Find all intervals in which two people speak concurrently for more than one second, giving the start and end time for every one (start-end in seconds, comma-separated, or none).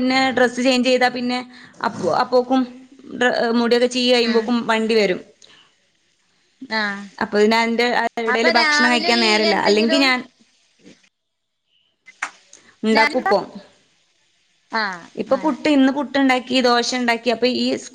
8.3-10.1